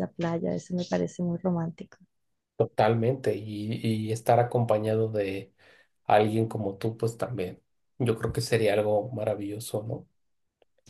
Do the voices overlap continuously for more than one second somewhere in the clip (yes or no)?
no